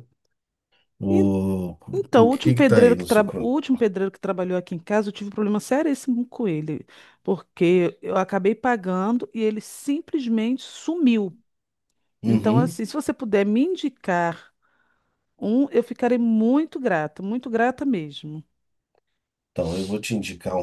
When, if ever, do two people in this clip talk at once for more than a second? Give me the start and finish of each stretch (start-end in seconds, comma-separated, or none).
2.1-3.5